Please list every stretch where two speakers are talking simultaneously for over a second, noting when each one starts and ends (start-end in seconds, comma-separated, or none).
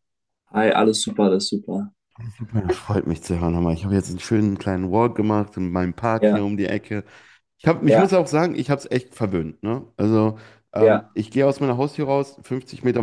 none